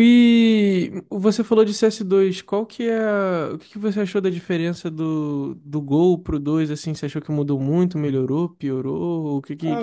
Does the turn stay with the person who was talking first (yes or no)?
no